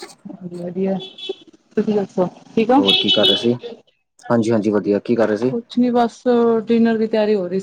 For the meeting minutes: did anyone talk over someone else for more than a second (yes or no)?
no